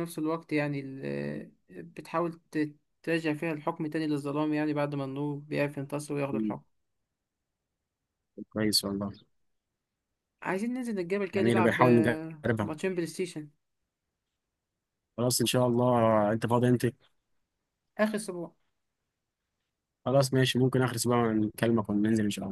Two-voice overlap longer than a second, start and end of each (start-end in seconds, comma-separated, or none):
11.3-12.7